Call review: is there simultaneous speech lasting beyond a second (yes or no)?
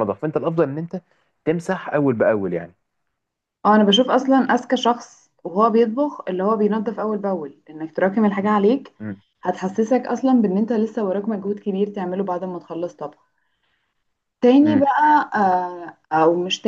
no